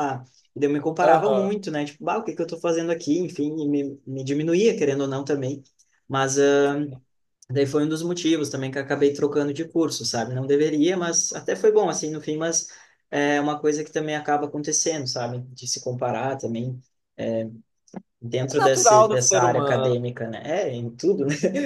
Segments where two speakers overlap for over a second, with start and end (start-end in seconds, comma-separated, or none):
18.5-19.9